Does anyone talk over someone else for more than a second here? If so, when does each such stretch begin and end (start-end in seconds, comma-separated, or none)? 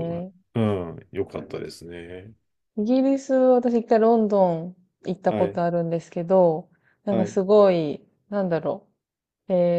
none